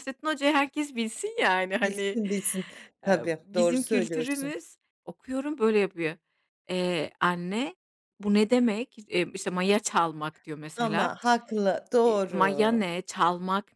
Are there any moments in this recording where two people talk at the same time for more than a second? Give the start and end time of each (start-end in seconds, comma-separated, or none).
3.0-4.5